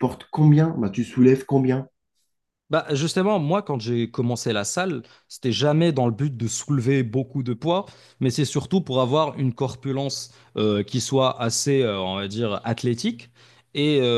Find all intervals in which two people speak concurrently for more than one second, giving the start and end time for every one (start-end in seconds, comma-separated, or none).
none